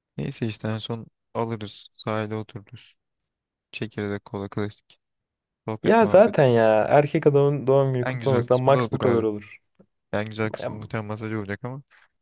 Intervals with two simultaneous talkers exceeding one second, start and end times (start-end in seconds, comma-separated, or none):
8.1-9.2